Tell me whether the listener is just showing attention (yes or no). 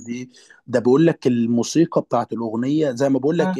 yes